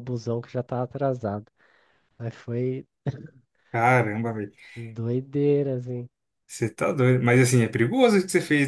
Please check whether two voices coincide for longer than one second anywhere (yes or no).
no